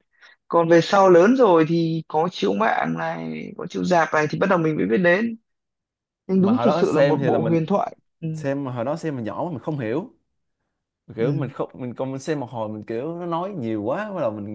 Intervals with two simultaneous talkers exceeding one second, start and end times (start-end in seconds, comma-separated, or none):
6.4-7.6